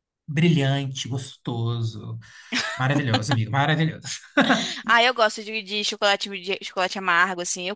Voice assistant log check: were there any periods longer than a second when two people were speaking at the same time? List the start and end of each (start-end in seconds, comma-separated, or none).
none